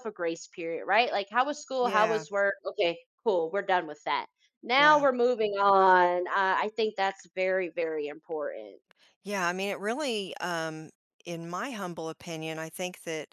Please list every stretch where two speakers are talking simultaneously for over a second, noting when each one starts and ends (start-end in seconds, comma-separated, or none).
none